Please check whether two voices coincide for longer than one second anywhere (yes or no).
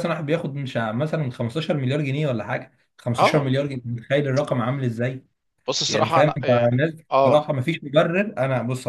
yes